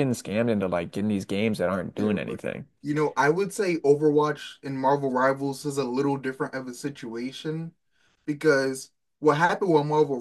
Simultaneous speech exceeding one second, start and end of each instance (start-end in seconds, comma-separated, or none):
none